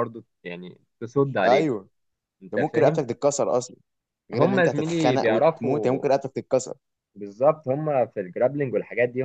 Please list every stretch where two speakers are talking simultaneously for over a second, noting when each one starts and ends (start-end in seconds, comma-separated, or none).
4.3-6.0